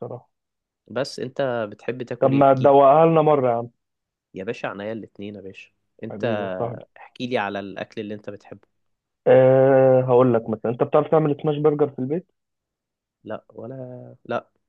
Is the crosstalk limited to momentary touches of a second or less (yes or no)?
yes